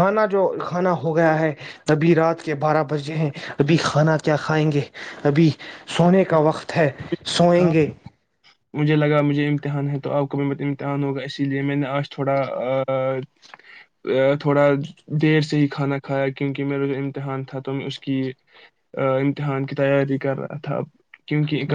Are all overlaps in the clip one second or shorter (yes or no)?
yes